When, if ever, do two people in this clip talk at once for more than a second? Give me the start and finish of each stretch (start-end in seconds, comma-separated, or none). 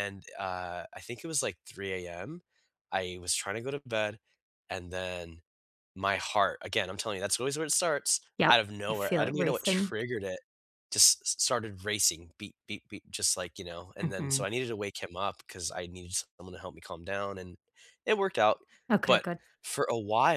8.4-9.9